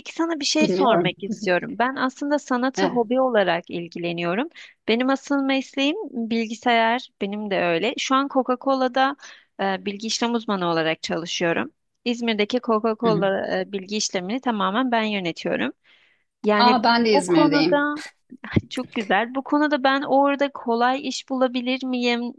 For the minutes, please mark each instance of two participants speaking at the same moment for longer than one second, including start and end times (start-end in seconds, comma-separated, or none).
16.6-17.9